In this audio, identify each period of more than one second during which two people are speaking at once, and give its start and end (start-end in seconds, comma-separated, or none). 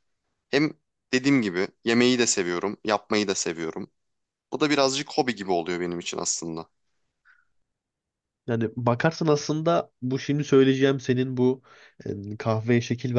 none